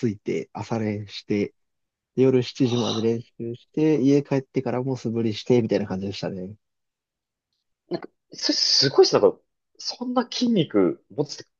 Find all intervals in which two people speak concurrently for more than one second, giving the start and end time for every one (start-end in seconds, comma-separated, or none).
none